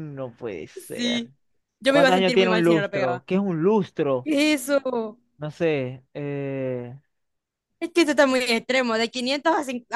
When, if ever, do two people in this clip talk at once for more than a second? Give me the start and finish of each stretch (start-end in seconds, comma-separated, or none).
1.9-3.2